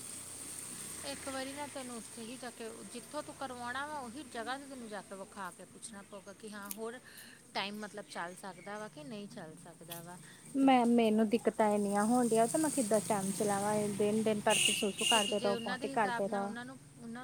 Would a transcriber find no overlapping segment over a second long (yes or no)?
no